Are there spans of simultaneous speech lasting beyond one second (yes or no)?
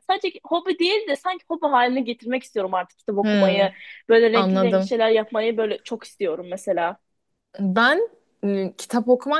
no